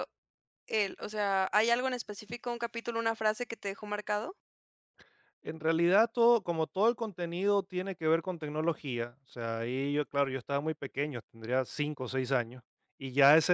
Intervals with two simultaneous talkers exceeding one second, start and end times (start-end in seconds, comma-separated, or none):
none